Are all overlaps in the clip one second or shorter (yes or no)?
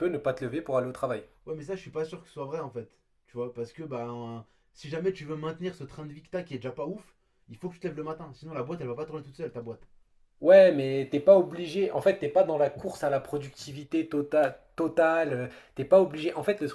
yes